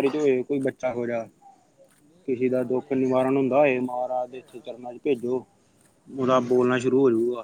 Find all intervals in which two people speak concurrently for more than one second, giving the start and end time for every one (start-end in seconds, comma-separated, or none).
2.2-4.8